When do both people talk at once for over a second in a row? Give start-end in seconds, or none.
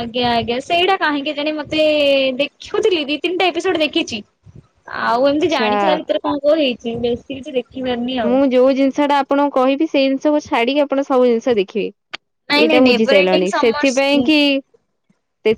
12.5-13.9